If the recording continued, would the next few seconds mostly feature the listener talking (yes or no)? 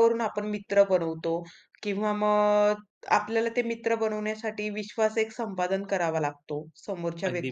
no